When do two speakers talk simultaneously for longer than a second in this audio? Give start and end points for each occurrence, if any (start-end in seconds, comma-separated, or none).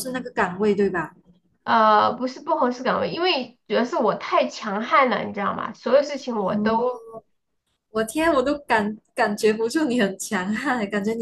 none